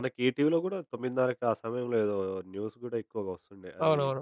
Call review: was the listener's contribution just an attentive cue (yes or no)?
no